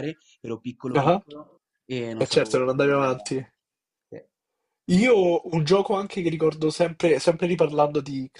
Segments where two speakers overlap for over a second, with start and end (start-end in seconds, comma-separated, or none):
2.2-3.5